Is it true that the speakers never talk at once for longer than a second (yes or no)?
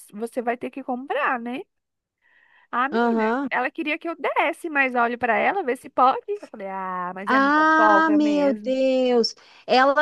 no